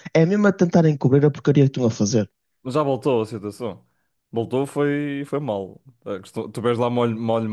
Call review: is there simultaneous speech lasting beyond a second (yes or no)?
no